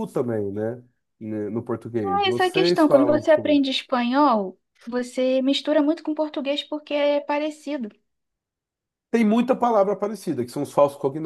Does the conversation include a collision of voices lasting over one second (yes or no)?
yes